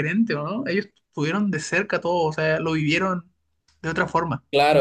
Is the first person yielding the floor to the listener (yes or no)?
yes